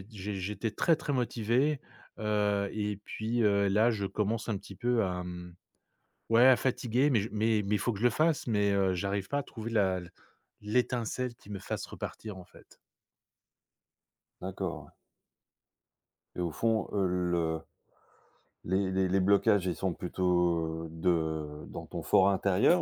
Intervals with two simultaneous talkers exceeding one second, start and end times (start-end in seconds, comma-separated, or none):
none